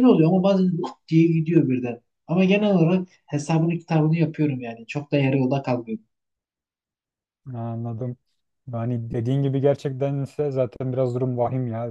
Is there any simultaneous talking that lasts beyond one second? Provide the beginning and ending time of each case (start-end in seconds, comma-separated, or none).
none